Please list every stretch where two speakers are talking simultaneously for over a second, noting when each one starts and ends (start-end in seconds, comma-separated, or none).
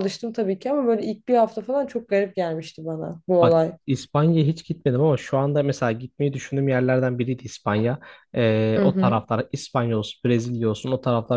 none